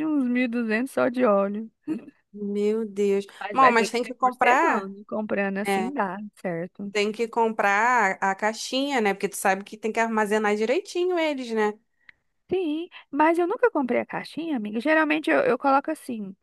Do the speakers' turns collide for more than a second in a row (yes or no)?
yes